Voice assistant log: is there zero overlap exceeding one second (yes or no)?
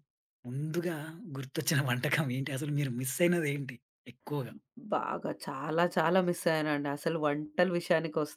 yes